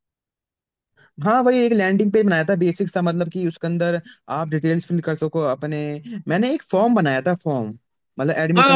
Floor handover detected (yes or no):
yes